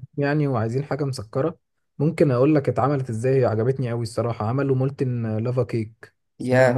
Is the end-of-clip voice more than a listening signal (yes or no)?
yes